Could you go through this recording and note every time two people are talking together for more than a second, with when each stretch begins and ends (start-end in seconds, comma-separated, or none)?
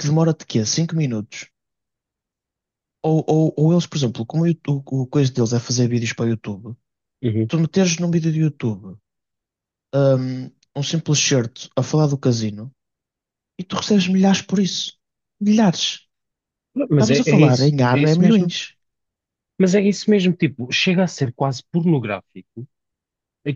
16.9-18.5